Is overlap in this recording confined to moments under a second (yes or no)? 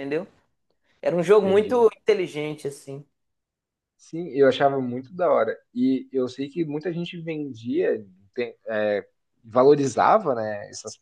yes